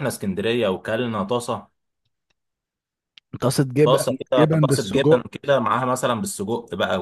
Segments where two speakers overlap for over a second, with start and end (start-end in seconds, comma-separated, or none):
3.8-5.2